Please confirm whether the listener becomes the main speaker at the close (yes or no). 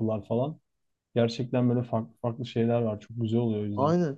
yes